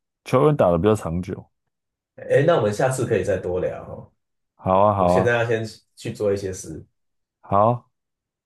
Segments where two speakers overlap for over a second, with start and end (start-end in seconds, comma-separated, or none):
none